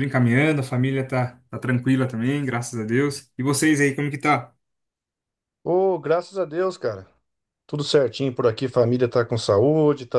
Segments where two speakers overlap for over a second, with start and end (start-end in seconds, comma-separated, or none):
none